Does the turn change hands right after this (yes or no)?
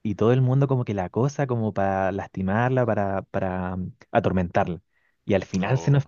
no